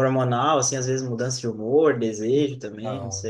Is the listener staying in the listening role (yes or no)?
no